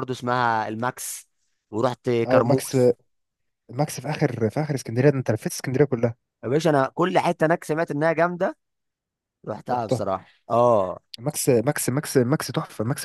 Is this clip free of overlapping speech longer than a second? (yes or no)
yes